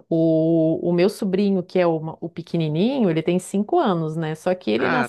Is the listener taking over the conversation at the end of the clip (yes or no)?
no